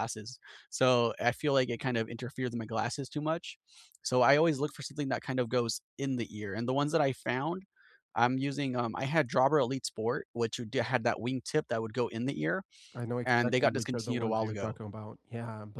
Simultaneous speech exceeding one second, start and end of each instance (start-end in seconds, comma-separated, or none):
13.2-14.8